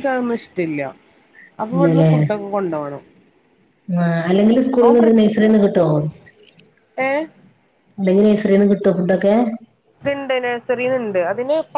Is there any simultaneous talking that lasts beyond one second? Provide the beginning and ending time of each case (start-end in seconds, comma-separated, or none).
none